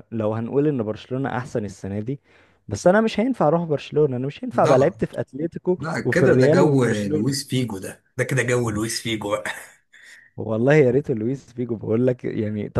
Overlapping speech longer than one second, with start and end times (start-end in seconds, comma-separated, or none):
5.8-7.5